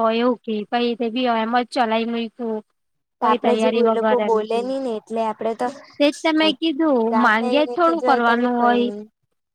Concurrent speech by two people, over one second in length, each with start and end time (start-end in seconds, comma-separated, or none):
7.1-8.9